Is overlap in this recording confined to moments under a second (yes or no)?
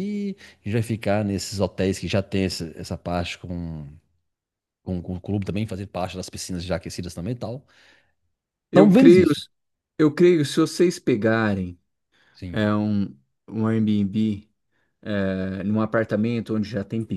yes